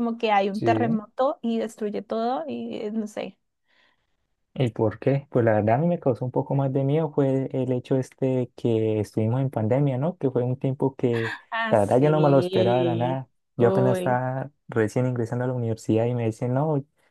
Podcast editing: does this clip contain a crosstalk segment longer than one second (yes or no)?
yes